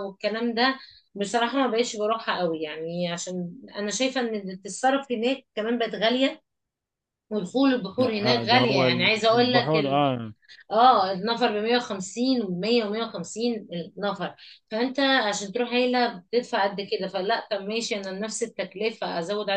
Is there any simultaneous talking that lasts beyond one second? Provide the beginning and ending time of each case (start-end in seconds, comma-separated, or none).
8.0-9.7